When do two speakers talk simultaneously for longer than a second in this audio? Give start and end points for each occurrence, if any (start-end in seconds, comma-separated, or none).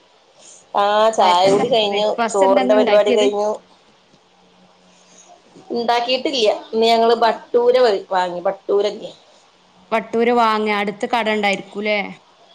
1.2-3.3